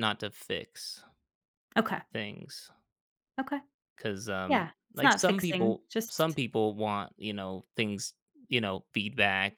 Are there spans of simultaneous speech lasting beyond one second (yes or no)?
yes